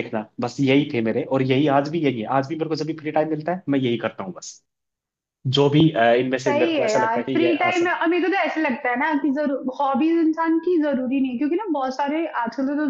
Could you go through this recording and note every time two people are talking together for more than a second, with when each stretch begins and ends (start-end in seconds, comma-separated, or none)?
6.5-7.9